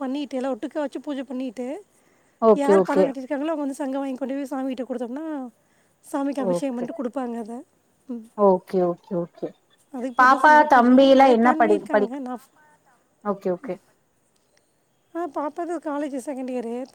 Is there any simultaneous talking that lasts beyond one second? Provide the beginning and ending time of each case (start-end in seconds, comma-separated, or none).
10.2-12.2